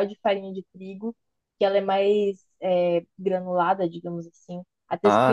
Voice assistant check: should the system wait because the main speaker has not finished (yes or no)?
yes